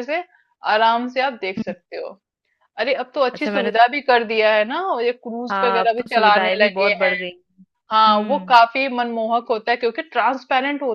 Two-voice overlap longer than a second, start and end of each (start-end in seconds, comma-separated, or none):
5.5-7.1